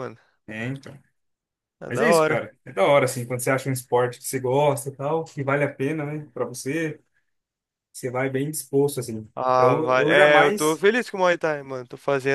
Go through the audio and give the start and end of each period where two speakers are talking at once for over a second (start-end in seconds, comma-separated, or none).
9.4-10.8